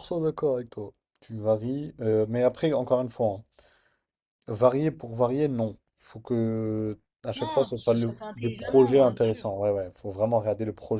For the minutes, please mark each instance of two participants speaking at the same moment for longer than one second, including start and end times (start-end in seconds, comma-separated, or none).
7.3-9.5